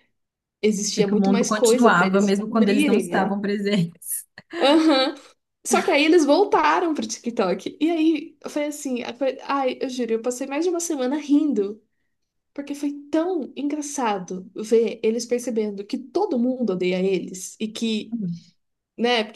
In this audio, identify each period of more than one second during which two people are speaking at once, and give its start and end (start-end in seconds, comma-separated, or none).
0.9-3.3